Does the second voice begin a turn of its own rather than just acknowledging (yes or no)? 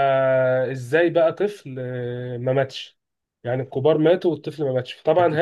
no